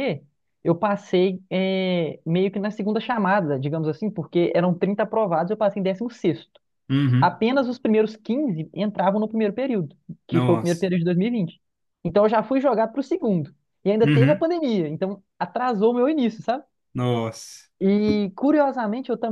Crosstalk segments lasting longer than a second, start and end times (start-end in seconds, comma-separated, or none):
none